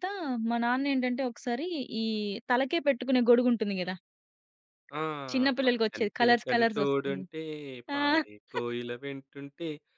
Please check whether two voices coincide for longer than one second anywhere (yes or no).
yes